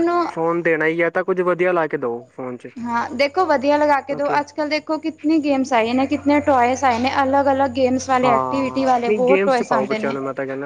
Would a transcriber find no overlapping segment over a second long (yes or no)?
no